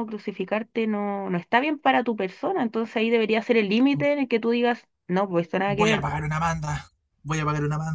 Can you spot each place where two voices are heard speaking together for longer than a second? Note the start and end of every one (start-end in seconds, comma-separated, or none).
none